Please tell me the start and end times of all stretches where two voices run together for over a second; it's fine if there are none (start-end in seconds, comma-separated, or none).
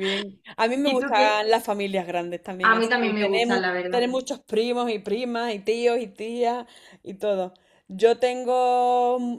2.6-4.0